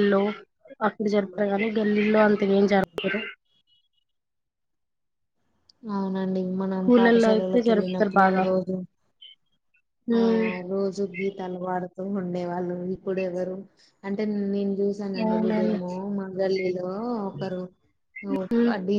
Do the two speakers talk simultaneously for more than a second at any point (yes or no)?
yes